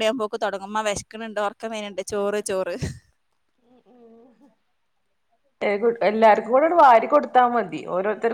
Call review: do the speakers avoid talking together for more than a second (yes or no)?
yes